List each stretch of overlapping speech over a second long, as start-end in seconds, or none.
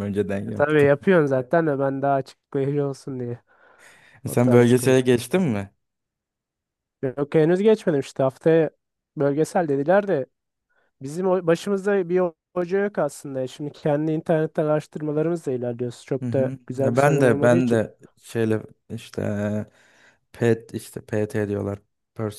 4.3-5.5, 16.2-17.8